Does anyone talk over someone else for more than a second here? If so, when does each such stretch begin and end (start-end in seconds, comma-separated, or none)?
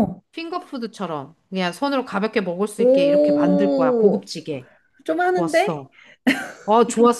2.8-4.3